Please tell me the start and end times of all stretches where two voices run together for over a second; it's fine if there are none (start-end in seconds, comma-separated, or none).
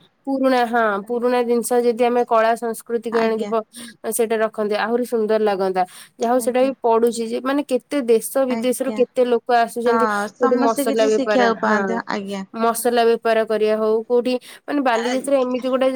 9.9-11.9